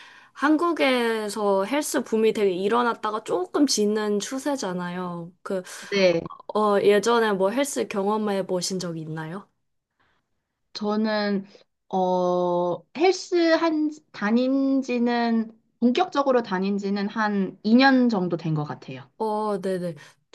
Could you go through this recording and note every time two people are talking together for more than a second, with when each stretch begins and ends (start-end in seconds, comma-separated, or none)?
none